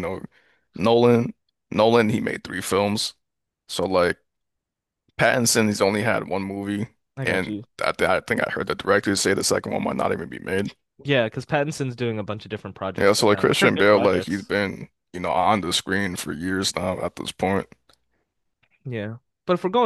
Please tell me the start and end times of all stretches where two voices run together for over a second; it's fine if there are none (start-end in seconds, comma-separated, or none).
13.0-14.5